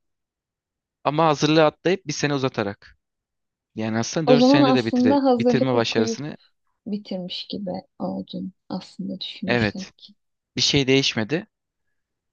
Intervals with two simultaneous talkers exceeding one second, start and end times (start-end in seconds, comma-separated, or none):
4.3-6.2